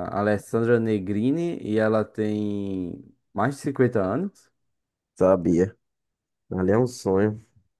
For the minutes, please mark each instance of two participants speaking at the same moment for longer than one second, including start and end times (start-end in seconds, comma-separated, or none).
none